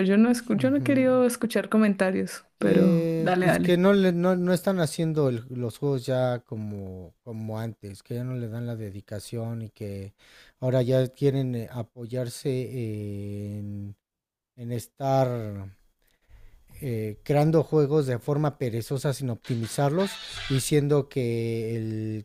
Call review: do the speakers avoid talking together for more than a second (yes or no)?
no